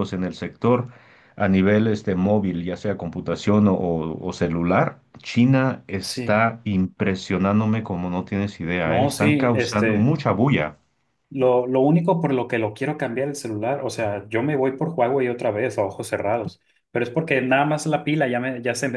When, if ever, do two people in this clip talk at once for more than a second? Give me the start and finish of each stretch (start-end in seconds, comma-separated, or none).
8.8-10.1